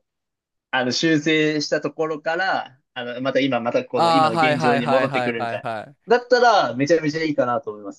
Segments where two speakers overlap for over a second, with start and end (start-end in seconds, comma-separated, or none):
4.0-5.6